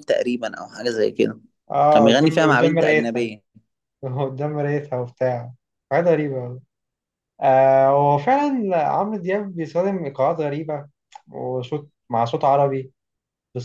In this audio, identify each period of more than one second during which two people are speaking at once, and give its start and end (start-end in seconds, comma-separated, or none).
1.9-3.3